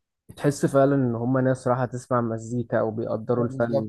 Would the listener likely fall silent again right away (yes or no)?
no